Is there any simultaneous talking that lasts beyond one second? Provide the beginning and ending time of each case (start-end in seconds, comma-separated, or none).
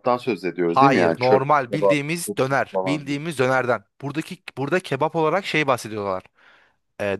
0.7-2.0